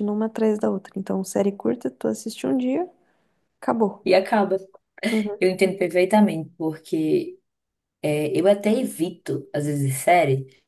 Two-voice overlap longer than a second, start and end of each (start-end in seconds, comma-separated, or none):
none